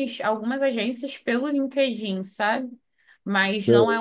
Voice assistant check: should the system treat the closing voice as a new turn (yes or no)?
no